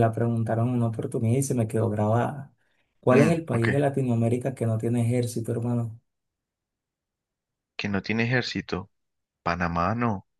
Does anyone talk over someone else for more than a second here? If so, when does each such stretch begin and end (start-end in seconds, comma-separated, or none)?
none